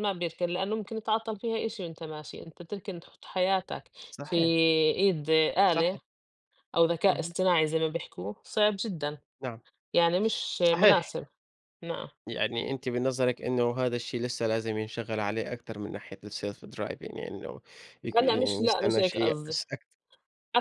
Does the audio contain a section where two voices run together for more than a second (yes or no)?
yes